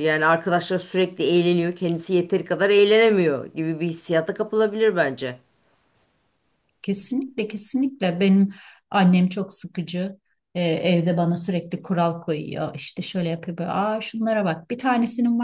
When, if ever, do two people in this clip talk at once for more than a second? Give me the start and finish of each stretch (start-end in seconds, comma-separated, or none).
none